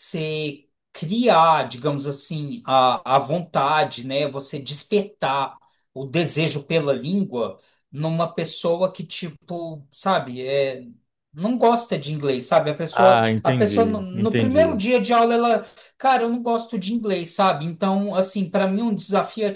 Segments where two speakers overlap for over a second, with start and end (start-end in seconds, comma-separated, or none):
12.9-14.8